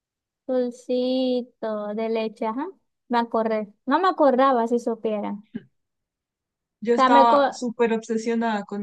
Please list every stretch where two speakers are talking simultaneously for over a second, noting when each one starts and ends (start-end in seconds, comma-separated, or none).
none